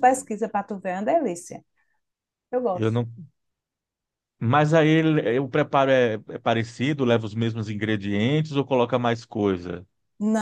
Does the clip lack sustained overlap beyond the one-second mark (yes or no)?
yes